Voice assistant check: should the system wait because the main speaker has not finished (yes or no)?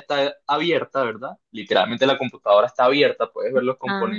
yes